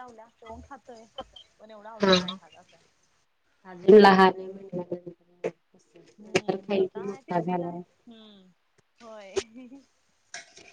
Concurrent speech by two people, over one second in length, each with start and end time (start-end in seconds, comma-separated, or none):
6.2-7.8